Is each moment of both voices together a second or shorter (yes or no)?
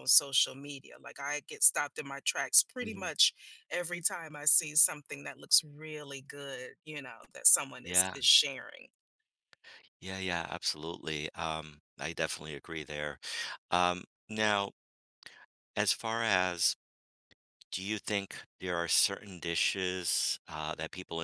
yes